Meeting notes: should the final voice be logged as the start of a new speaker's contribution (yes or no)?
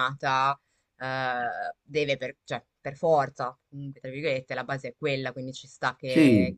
no